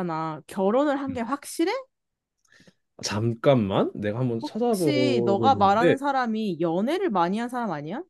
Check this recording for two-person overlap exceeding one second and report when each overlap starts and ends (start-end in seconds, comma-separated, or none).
4.4-6.0